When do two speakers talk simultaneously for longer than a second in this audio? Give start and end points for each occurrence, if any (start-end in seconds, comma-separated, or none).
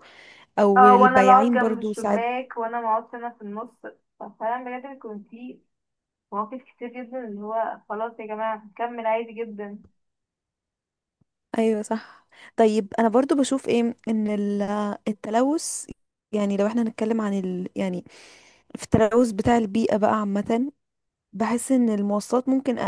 0.8-2.2